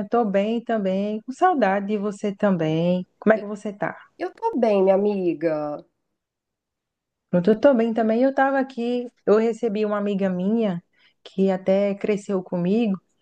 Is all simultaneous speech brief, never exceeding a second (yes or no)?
yes